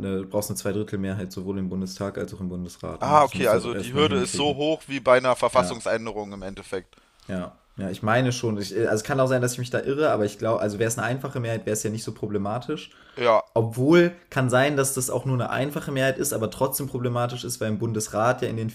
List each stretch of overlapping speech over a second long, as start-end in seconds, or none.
3.0-4.6